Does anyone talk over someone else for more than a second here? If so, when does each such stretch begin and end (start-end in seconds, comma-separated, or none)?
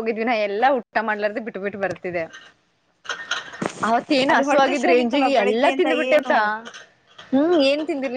4.3-6.2